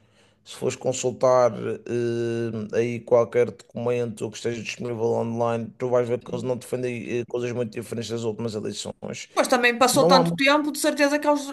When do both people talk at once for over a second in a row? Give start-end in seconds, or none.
none